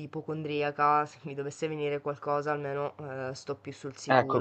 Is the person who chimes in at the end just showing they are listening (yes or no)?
no